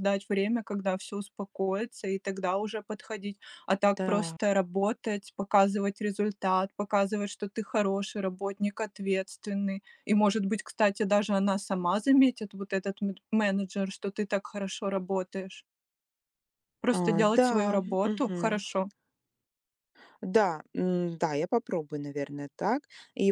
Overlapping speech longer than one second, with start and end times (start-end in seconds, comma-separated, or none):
16.9-18.6